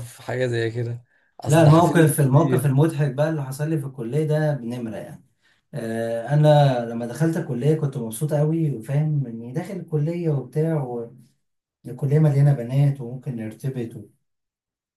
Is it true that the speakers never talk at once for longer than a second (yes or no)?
no